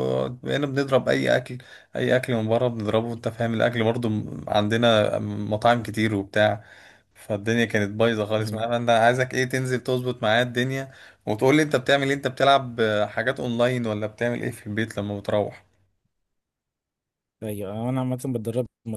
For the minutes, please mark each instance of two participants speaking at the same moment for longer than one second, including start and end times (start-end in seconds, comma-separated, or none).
none